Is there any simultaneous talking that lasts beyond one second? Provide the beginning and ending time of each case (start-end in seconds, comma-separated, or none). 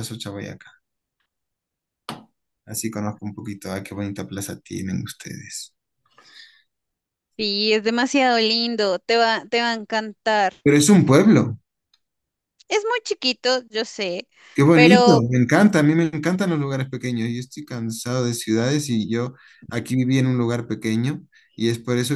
none